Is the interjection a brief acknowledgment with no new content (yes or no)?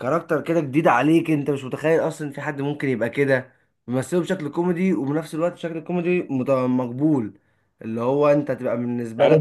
no